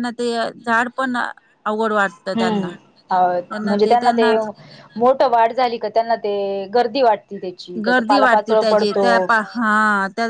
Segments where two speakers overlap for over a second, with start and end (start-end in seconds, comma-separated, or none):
none